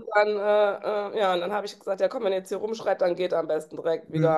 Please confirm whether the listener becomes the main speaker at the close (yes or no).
yes